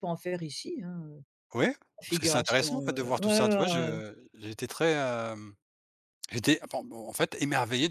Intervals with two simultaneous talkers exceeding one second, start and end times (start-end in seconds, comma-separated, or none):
2.0-3.9